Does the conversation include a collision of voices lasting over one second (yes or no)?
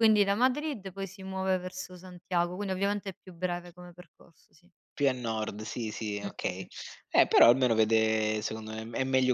no